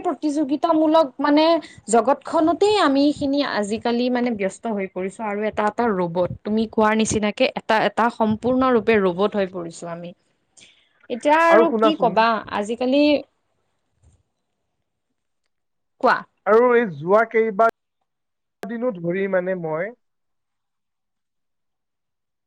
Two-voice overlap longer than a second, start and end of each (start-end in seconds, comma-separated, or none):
none